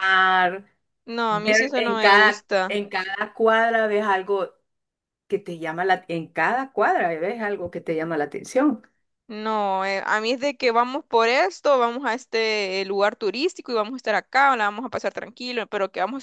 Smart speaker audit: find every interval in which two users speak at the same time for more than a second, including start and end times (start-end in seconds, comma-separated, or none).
1.3-2.8